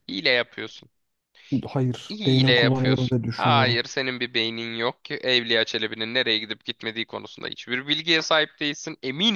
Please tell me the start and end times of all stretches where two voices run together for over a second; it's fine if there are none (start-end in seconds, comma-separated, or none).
2.1-3.8